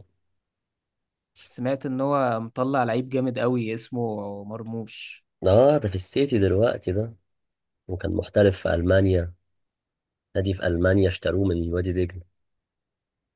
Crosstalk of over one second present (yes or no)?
no